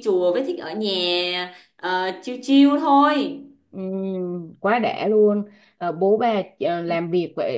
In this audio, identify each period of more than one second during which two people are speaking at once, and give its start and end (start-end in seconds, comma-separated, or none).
none